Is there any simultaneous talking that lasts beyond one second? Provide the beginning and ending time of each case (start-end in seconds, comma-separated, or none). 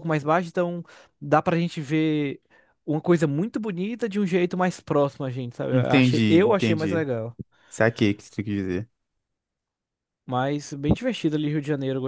5.7-7.0